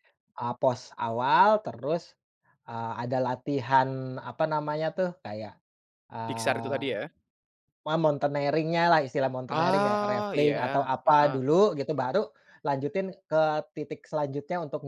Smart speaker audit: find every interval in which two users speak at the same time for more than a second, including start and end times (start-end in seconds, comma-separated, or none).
9.5-11.4